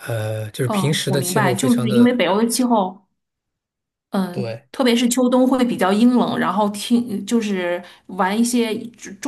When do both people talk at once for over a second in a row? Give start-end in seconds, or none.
0.6-2.2